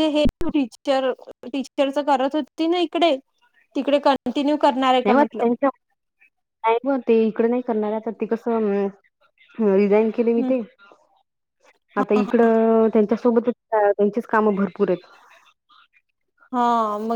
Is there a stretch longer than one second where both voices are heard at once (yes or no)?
no